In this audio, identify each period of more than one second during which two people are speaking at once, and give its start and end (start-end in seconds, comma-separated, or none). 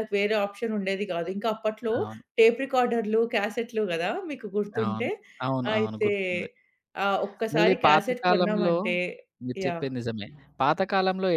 7.5-8.8